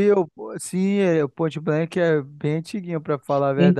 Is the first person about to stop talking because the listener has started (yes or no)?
yes